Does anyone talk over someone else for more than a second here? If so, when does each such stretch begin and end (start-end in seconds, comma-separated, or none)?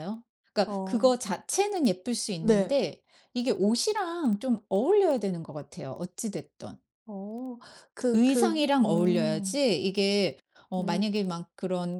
8.1-9.6